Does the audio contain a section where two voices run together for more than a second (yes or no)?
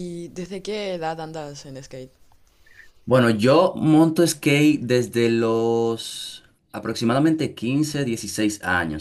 no